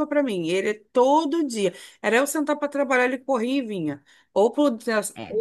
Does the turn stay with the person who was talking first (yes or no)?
yes